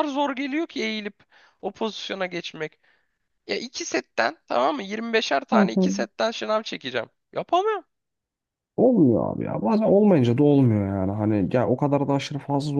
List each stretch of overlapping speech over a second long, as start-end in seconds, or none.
none